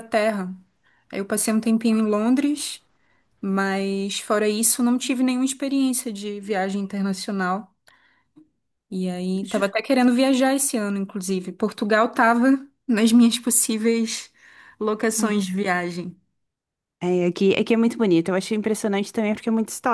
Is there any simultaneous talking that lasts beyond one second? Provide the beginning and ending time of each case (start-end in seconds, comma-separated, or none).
none